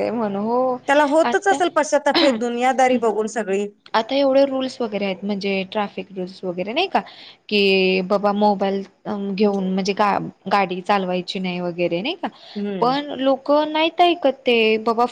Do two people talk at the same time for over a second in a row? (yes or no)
no